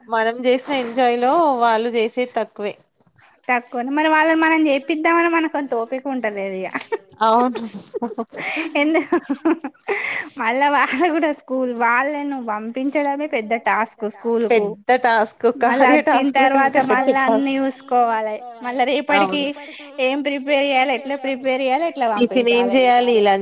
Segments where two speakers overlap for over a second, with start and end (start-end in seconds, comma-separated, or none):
15.7-17.6